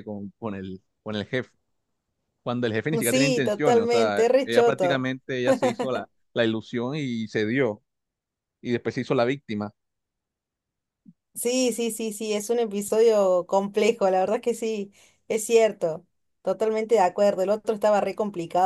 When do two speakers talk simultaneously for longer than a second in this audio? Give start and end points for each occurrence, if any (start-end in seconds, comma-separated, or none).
3.0-5.1